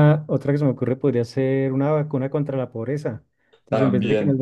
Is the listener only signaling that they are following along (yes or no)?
yes